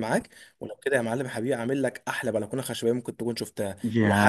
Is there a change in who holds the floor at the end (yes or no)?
yes